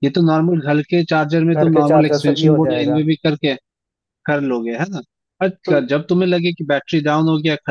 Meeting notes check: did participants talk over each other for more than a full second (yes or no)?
yes